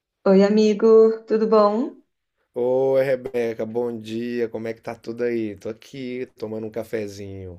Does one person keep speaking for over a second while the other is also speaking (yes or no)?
no